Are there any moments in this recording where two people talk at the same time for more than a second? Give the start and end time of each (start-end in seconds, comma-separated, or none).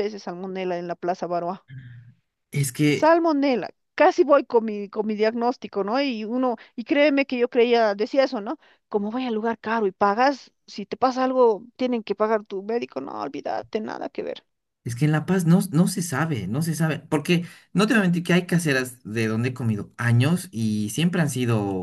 none